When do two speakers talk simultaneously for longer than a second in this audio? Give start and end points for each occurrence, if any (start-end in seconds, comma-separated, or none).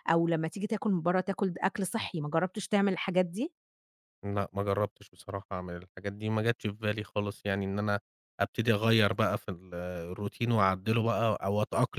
none